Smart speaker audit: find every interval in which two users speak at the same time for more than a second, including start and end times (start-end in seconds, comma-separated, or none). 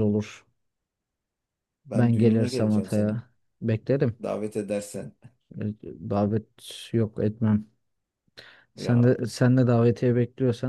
1.9-3.2